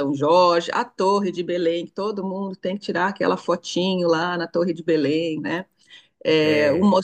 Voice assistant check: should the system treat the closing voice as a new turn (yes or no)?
no